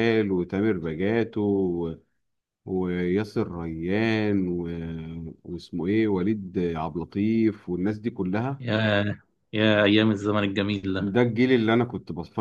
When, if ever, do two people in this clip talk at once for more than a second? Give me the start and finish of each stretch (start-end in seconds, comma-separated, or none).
none